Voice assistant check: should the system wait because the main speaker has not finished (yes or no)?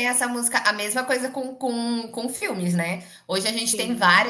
yes